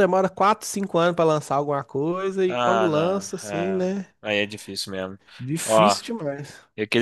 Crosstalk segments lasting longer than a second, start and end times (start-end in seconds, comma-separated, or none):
2.5-3.9